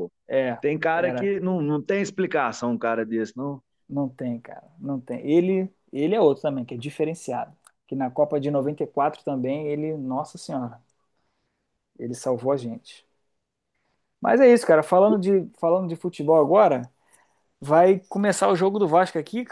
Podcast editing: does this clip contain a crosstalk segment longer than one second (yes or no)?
no